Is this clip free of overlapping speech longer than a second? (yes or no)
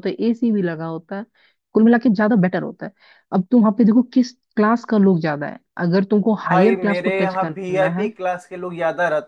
no